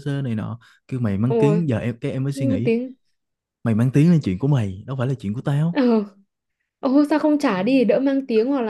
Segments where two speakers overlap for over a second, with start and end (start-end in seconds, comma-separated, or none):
none